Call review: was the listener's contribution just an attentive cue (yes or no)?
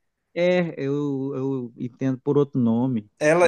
no